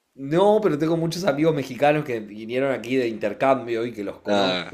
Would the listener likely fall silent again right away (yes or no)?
yes